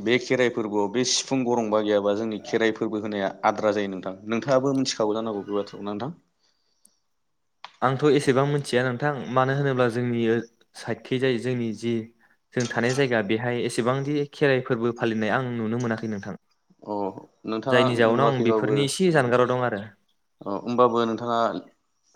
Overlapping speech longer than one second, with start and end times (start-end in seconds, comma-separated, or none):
17.7-19.2